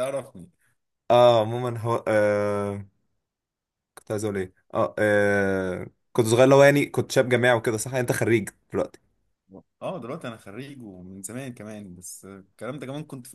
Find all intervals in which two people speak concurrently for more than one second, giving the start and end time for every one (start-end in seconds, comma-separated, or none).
none